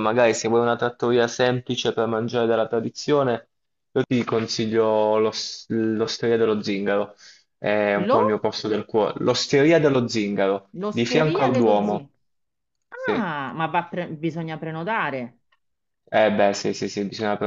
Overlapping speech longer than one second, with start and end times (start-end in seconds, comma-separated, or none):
10.7-12.0